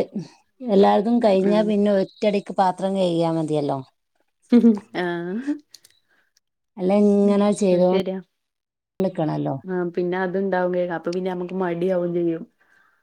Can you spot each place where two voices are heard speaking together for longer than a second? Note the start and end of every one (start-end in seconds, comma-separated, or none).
none